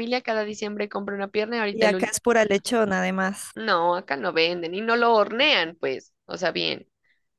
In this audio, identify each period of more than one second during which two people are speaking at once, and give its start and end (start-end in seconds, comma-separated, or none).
none